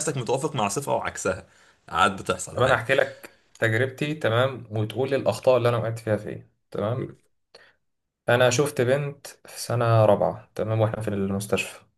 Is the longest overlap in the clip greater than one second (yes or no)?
no